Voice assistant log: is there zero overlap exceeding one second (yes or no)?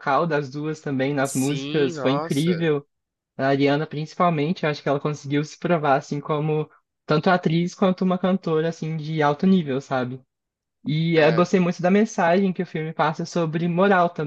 no